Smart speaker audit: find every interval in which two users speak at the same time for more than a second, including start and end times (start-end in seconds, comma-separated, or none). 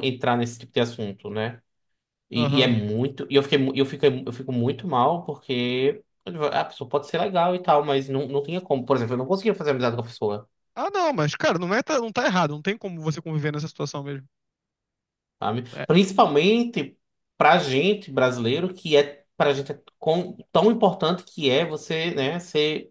none